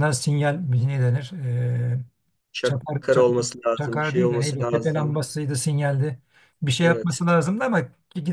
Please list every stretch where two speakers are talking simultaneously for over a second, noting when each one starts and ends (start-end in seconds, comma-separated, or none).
2.6-5.2